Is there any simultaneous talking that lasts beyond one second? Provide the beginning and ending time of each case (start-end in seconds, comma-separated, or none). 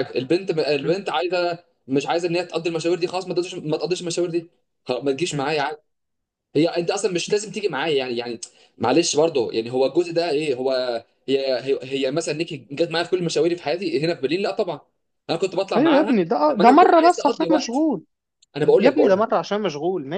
15.8-17.9